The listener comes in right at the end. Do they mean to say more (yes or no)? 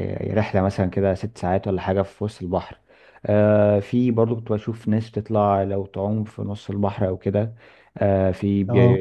no